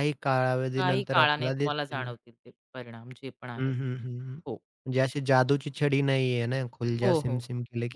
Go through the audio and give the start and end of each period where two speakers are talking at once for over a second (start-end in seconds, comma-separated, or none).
0.8-2.0